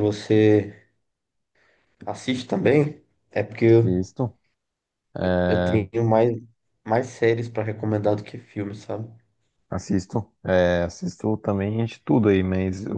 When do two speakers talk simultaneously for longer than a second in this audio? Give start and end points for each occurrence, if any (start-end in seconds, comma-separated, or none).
none